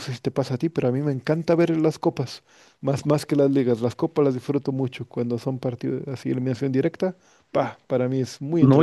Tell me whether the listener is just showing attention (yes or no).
no